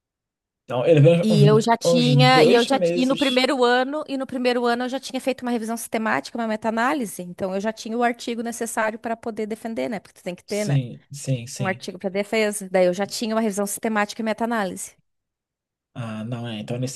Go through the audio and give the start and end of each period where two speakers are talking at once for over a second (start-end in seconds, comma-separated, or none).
1.2-3.4